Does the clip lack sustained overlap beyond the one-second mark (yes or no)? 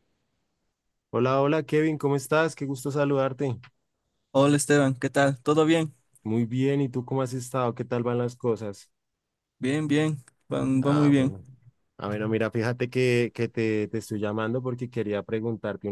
yes